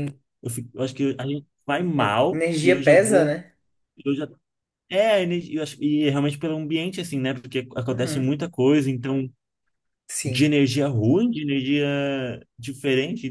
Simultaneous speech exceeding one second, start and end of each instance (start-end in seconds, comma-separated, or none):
1.9-3.3